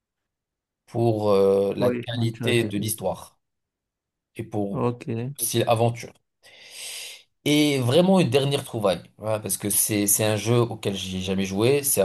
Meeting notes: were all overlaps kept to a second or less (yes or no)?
no